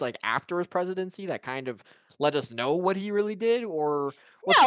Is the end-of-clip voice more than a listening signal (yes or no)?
yes